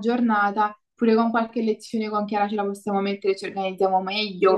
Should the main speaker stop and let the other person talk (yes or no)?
yes